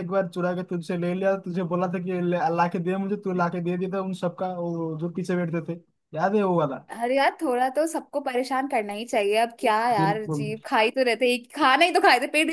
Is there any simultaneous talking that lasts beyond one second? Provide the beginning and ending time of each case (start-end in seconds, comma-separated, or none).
none